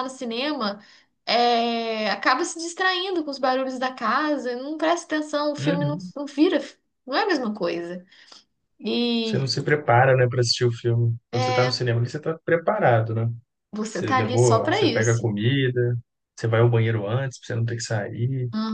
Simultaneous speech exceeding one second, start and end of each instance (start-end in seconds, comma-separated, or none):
13.9-15.3